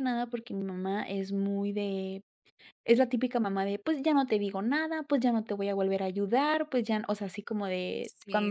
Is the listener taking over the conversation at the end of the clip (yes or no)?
yes